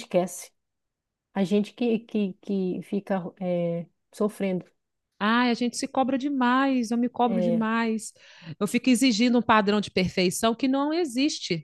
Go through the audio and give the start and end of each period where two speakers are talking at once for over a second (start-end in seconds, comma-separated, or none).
none